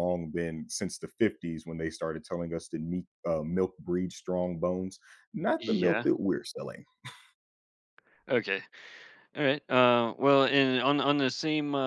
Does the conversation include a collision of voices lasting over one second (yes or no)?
no